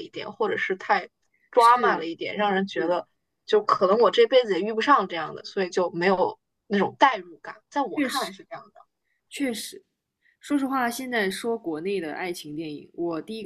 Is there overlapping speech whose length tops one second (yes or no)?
no